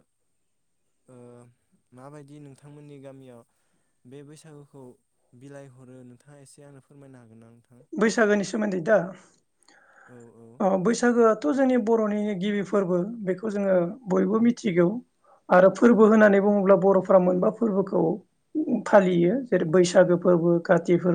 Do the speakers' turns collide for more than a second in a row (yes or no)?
no